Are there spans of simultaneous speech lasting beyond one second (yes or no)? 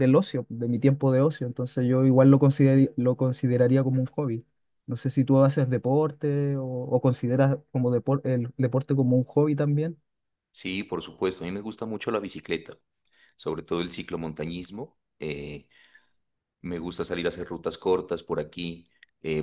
no